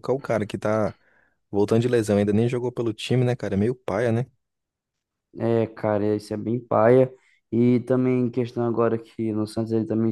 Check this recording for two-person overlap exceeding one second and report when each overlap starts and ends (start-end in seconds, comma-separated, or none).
none